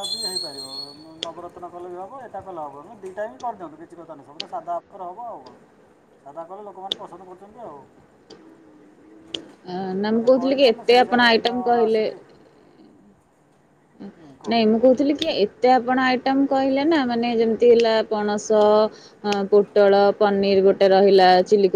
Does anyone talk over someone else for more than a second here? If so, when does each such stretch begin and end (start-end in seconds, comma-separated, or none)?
10.1-12.1